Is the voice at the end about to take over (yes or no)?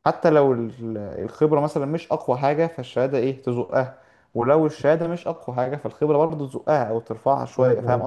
yes